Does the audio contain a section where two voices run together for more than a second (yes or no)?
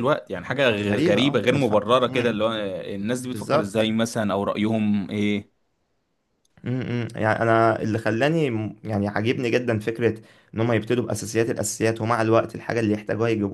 yes